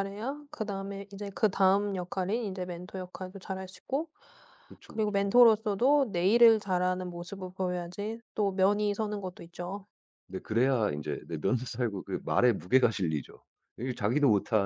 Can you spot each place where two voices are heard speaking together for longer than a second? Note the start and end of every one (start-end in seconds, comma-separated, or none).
none